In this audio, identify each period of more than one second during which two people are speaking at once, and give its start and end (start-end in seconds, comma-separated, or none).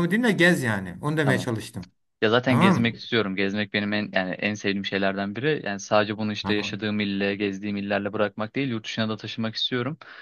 none